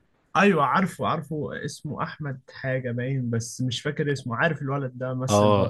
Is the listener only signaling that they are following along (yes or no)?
no